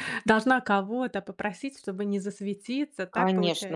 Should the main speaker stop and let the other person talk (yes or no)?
yes